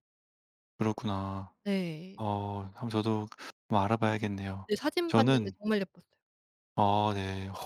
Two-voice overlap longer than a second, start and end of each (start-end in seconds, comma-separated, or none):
none